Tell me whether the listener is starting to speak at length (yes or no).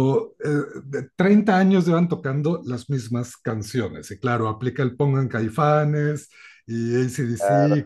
no